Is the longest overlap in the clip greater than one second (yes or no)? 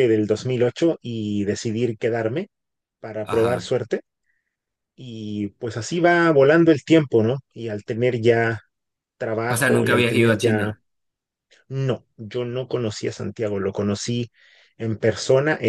yes